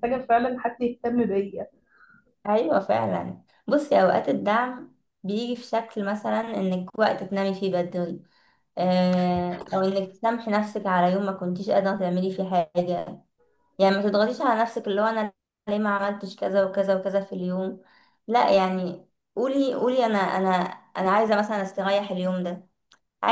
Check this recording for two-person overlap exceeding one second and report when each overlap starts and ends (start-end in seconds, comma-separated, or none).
none